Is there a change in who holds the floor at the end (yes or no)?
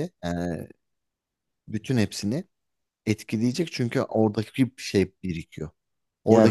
yes